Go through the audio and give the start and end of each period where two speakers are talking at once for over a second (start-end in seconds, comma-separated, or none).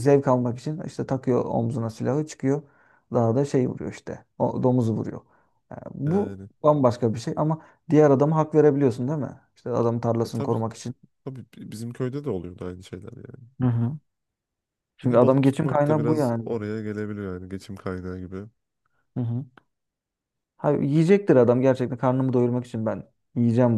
15.0-16.5